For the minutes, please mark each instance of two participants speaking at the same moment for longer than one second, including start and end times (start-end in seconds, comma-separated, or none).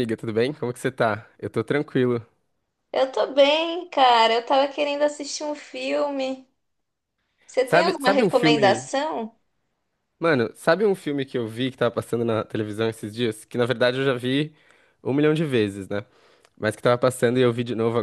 7.6-8.9